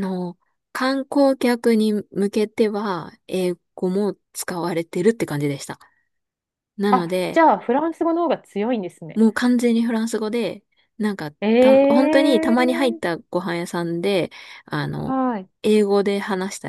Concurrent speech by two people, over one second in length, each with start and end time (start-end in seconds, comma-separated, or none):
11.4-13.1